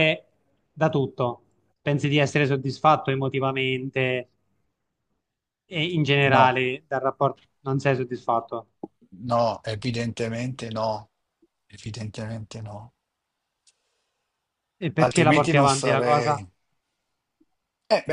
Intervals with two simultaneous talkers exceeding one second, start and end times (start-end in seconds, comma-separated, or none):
15.0-16.4